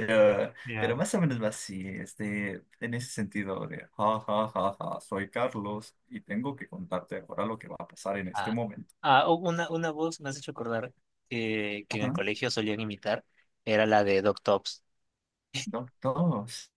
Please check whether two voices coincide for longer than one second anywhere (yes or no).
no